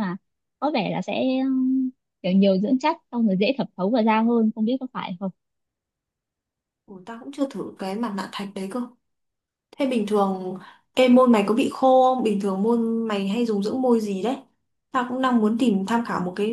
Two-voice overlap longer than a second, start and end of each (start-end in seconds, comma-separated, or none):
none